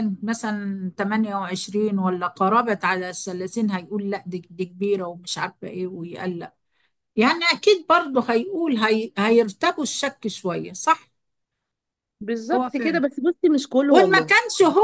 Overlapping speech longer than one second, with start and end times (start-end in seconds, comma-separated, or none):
none